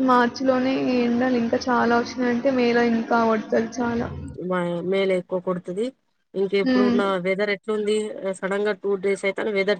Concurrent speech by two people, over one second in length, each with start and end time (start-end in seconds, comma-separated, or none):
none